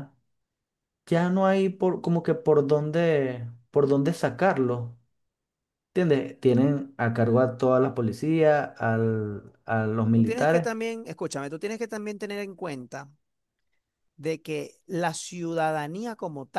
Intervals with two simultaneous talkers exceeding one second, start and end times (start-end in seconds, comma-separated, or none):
none